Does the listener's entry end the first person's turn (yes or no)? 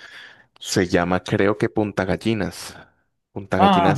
yes